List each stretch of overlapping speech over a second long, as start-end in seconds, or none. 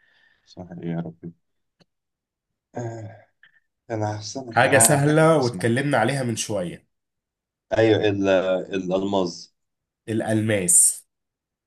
4.5-5.7